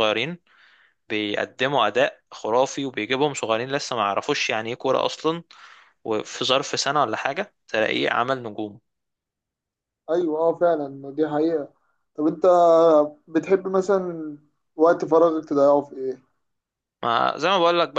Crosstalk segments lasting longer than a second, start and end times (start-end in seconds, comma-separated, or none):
none